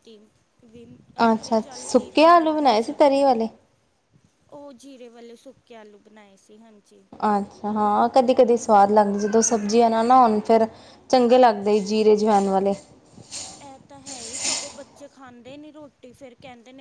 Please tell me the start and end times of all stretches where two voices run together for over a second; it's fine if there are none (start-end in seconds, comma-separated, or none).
1.3-3.3